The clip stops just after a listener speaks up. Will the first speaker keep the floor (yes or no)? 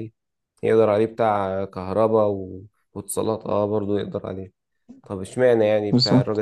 yes